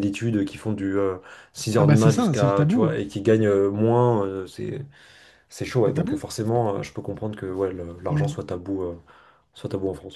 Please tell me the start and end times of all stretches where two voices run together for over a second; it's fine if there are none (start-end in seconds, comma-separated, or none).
1.8-3.0